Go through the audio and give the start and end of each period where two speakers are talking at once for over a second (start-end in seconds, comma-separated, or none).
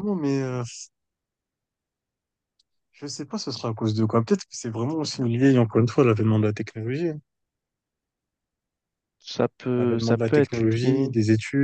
9.8-11.1